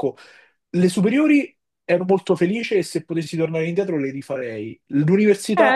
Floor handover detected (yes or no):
yes